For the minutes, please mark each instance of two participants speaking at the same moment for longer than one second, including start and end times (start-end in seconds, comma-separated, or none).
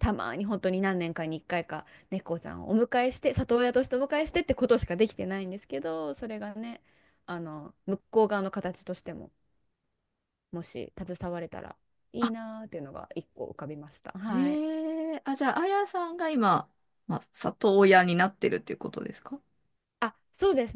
none